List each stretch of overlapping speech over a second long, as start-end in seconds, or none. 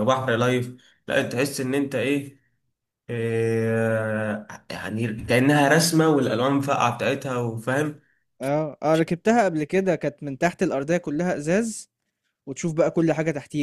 none